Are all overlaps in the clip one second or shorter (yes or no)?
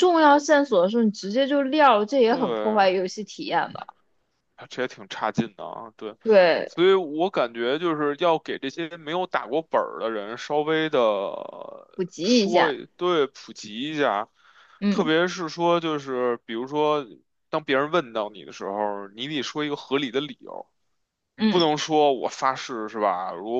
yes